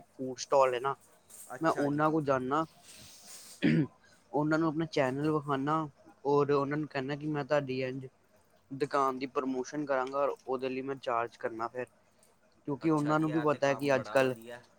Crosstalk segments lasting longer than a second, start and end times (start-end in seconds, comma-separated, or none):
12.8-14.1